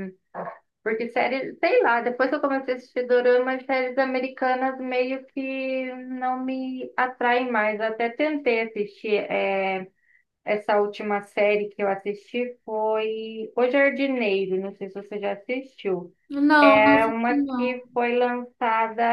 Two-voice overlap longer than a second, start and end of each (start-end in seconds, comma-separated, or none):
16.6-17.8